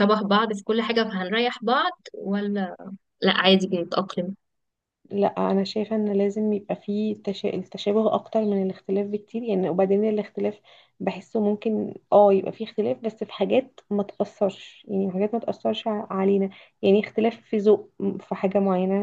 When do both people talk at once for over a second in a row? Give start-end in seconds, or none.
none